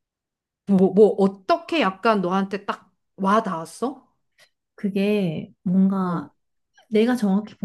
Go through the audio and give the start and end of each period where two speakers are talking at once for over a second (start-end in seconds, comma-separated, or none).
none